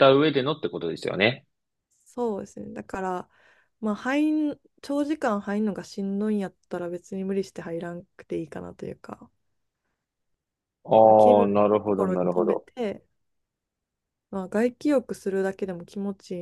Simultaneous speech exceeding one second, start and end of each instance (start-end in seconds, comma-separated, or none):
11.0-12.7